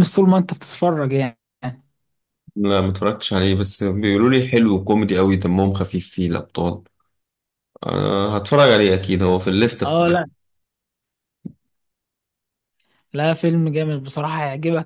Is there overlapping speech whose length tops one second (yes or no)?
no